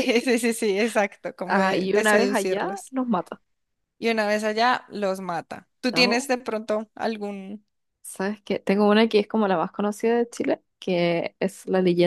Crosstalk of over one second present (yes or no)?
yes